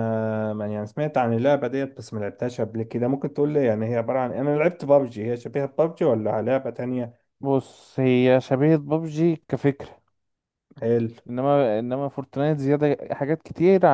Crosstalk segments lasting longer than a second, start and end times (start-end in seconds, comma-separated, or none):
none